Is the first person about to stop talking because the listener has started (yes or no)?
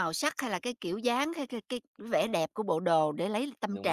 no